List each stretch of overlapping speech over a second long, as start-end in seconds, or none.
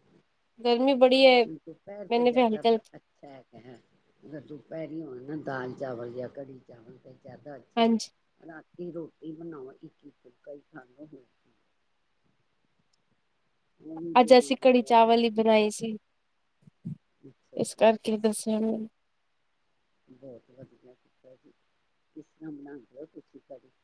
none